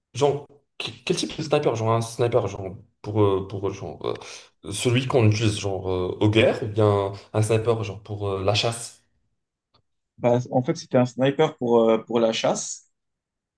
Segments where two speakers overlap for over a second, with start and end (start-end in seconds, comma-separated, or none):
none